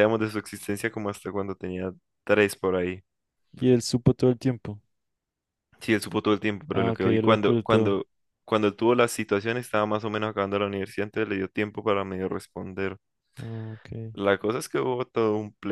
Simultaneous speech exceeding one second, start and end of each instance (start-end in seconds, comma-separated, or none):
6.7-8.0